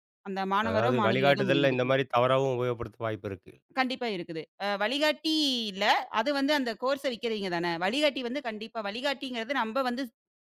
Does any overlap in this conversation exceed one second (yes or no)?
yes